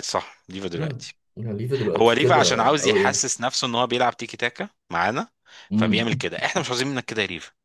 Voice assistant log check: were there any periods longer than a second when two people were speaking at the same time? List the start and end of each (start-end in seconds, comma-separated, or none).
2.0-3.3